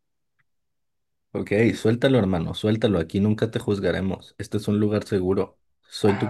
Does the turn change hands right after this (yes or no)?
yes